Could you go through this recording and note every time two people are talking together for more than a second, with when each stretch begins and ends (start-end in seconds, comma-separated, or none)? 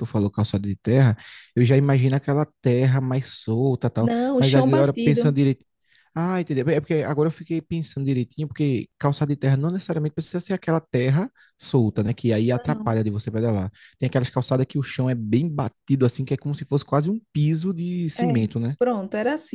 4.0-5.4